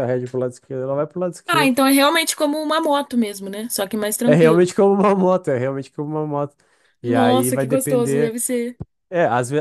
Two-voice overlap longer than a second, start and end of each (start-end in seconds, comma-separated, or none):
7.0-8.3